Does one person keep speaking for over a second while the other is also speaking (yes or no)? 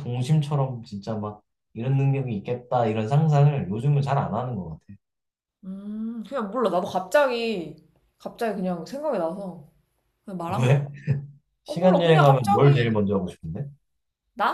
yes